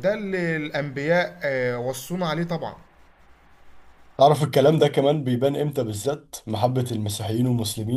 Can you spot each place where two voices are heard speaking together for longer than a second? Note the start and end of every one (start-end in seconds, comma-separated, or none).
none